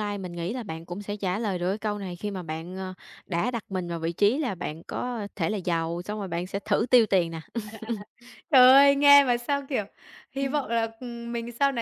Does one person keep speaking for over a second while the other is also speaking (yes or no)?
no